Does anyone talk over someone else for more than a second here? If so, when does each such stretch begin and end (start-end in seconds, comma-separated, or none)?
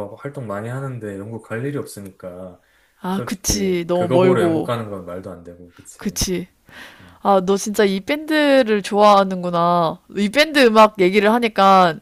3.1-4.7